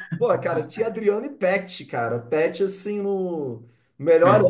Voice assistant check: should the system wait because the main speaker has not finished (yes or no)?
yes